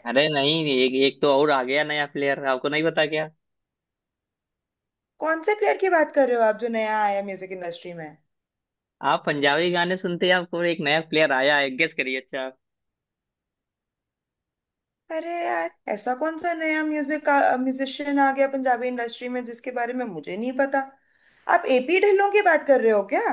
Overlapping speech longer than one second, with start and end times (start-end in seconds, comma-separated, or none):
none